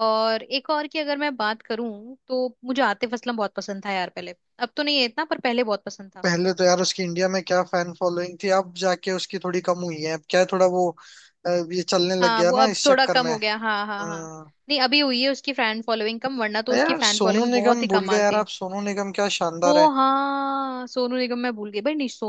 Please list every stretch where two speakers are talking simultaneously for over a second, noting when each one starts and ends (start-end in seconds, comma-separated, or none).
12.2-14.3, 16.8-18.4